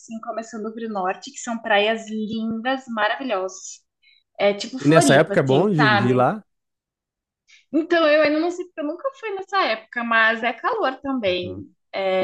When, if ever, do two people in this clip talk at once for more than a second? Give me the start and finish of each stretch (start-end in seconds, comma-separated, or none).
4.8-6.3